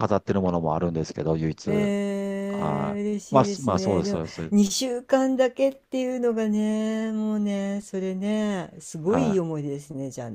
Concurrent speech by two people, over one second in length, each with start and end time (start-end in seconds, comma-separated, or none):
2.5-4.5